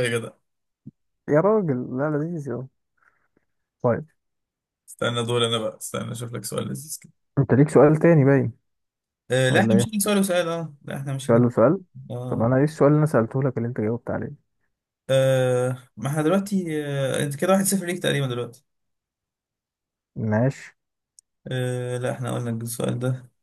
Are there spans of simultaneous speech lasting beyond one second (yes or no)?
no